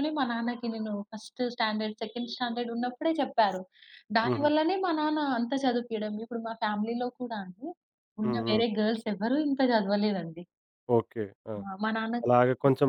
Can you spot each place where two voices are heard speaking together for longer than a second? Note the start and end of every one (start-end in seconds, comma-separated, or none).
none